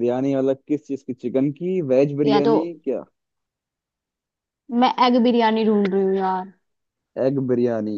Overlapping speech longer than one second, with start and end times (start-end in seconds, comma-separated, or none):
none